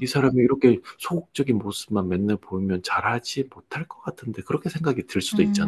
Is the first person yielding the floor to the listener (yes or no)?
yes